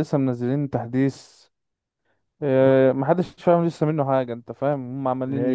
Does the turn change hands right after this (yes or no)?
no